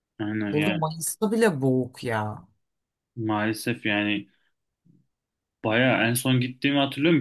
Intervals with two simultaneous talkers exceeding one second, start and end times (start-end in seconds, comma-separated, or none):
none